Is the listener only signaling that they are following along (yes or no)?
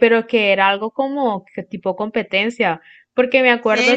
no